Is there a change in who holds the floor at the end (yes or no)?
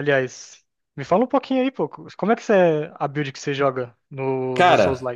yes